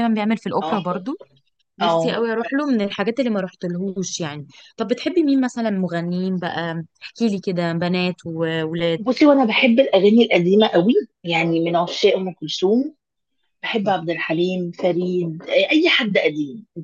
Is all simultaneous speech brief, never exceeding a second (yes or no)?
yes